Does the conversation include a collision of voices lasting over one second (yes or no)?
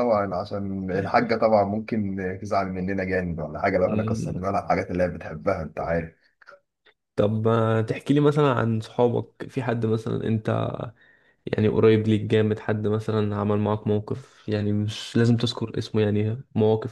no